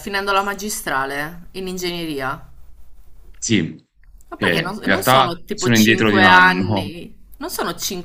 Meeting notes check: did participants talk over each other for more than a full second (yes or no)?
yes